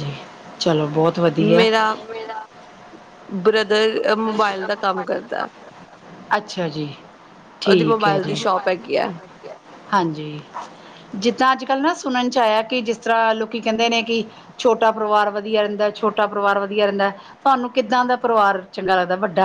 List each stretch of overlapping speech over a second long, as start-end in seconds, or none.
none